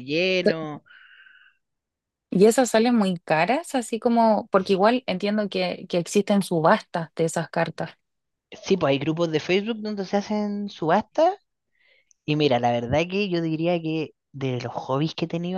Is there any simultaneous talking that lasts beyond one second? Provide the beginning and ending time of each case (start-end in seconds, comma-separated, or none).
none